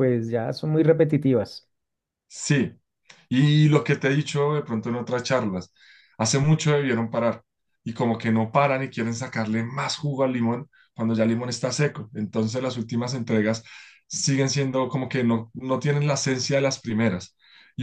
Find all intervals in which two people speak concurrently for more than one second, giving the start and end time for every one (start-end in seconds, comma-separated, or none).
none